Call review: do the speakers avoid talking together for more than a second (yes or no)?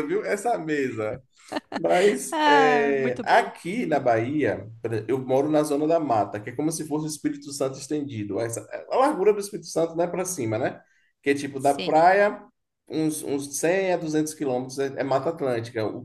no